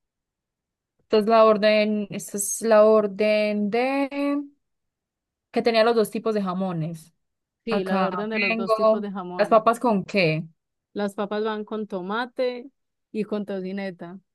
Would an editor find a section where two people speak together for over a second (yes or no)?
yes